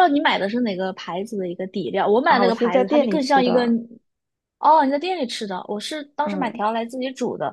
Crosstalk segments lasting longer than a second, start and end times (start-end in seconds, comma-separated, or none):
2.2-3.6